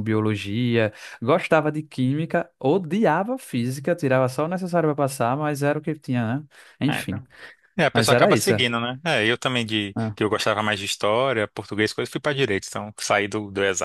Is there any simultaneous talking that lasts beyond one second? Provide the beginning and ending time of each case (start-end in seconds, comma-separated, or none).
none